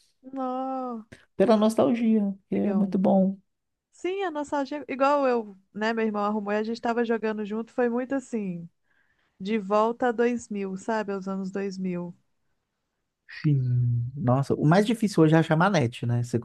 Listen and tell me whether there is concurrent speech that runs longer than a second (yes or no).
no